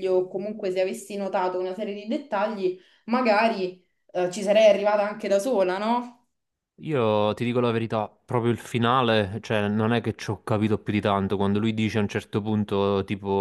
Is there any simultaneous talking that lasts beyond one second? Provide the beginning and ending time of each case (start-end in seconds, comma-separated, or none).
none